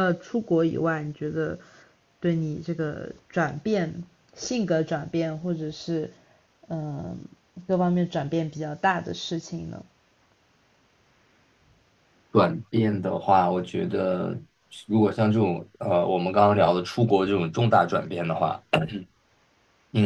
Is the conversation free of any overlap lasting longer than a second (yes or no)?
yes